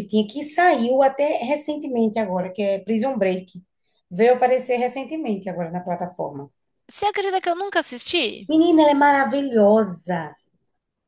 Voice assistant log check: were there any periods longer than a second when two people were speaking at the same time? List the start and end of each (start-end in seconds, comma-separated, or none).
none